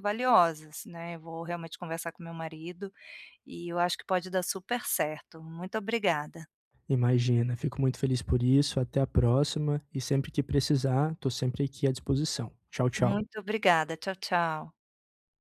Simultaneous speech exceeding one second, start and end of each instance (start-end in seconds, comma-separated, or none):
none